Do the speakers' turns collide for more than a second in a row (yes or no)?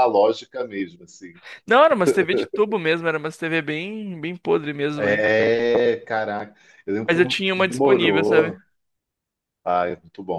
yes